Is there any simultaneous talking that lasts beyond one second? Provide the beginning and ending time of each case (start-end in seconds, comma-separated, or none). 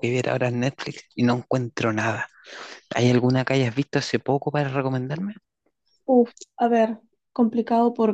none